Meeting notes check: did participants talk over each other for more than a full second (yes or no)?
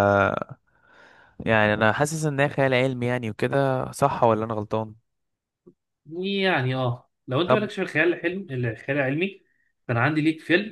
no